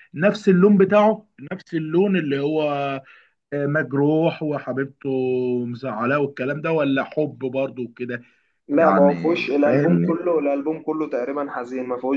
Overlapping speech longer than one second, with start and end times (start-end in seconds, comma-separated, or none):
8.8-10.2